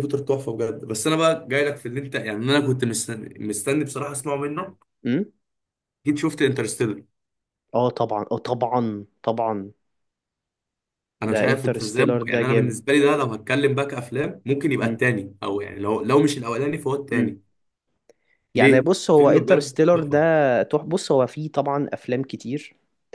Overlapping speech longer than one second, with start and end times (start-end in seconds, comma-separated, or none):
11.3-12.8, 18.6-20.2